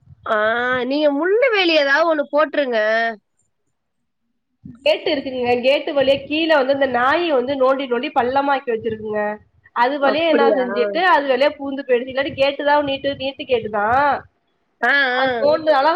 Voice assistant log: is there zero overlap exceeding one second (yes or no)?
yes